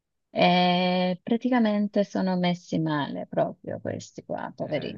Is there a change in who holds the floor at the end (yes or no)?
yes